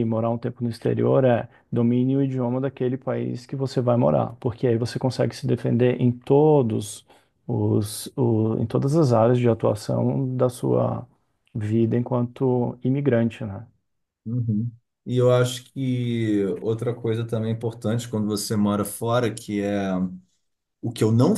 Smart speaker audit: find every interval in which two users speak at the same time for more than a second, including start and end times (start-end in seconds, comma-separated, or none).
none